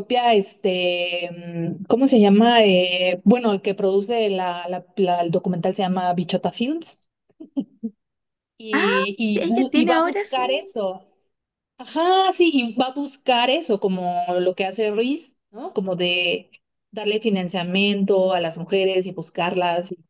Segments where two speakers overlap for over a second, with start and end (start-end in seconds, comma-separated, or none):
8.7-10.7